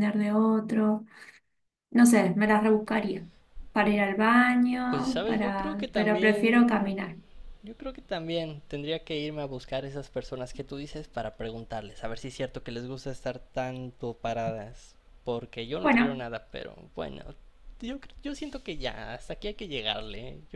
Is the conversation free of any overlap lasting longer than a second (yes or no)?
no